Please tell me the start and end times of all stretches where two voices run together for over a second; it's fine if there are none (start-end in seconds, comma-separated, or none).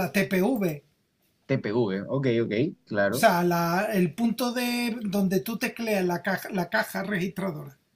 none